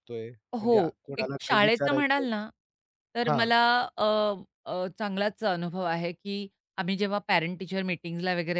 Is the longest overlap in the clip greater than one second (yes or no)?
yes